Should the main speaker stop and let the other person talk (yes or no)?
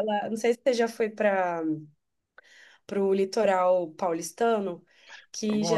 no